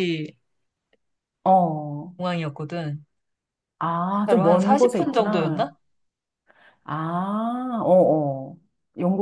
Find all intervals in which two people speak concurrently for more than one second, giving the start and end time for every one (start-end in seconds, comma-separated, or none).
4.3-5.7